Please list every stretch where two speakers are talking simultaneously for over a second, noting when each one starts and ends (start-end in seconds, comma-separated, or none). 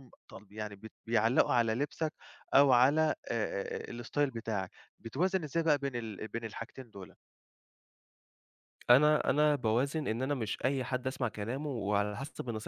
none